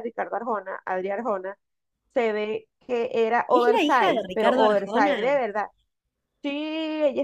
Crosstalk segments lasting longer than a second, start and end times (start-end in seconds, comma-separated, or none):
3.5-5.3